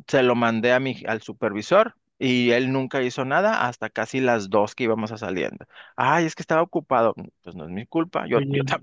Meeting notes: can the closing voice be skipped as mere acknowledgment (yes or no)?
yes